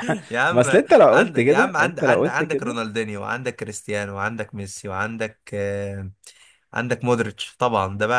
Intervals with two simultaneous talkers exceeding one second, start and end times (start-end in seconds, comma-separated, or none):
0.5-2.8